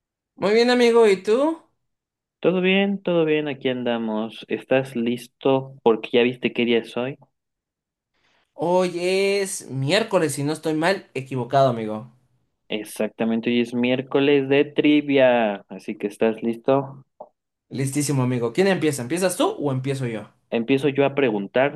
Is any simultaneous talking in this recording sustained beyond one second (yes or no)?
no